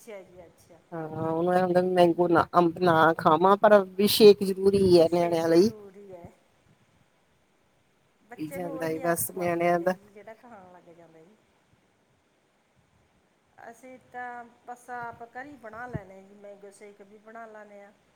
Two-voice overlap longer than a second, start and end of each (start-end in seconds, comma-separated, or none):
8.4-9.9